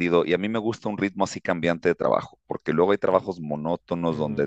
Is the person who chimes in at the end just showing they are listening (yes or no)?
no